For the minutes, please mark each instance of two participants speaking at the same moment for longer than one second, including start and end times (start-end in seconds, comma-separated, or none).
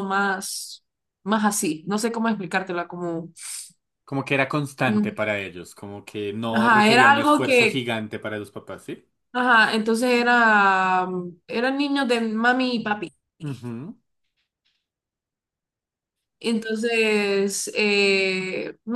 6.5-7.8